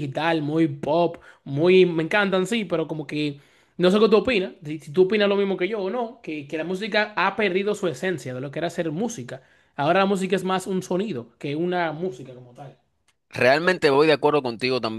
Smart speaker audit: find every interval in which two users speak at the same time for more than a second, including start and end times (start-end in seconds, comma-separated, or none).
none